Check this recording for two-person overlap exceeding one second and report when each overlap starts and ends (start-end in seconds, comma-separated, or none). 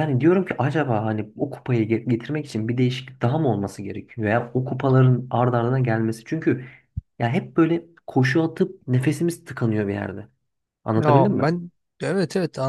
none